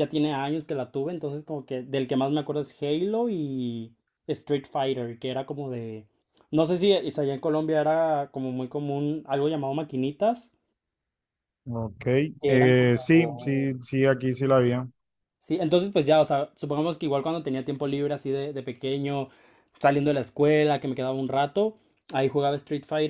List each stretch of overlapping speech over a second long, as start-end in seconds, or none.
12.5-13.7